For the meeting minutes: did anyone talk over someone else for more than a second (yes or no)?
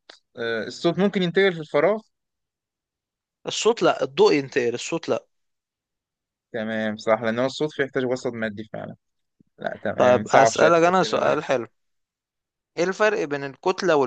yes